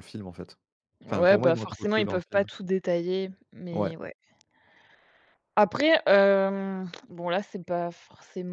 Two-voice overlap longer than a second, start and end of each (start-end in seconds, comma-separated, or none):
1.1-2.4